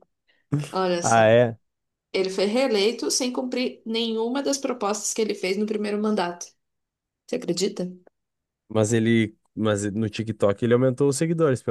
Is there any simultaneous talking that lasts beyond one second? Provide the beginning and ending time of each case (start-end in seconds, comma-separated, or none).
none